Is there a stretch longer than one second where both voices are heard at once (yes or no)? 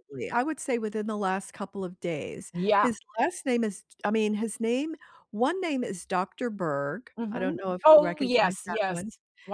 yes